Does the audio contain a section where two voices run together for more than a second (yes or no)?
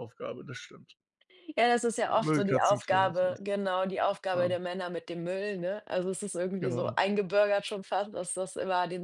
yes